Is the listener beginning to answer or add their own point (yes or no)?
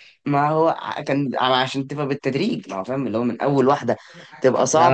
yes